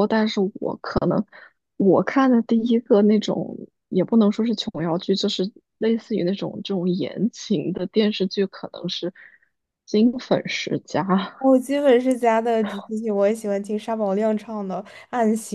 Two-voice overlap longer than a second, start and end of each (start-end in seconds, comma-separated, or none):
none